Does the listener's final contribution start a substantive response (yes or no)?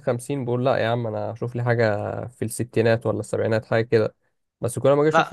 no